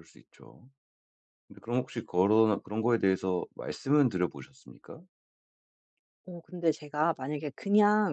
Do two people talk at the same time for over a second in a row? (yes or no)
no